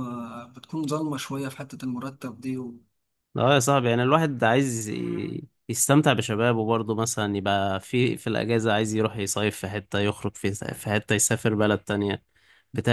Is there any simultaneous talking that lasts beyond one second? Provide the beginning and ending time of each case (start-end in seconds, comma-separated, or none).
none